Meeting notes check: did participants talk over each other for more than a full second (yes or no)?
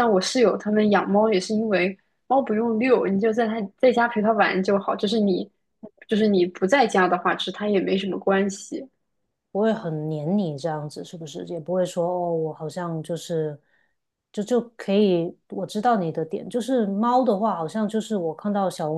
no